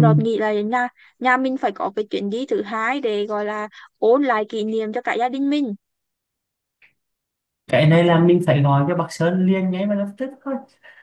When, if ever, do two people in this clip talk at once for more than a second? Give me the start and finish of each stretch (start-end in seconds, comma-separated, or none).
none